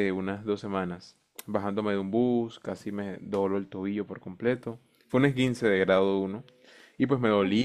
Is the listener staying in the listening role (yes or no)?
yes